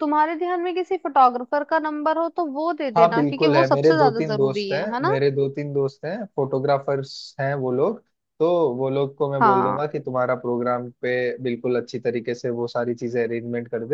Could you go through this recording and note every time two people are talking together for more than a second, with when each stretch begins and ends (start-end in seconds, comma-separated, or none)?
3.0-5.1